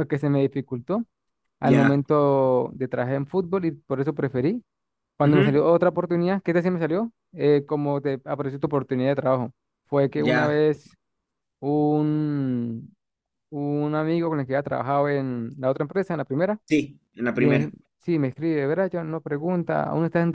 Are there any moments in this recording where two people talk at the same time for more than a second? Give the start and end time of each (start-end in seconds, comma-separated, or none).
none